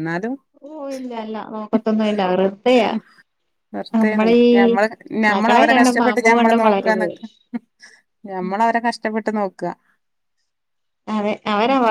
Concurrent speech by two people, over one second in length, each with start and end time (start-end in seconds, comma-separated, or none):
5.3-7.1